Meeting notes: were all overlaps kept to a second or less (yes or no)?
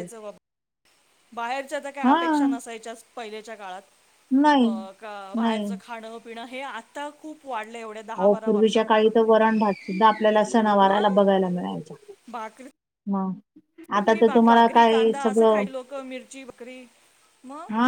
no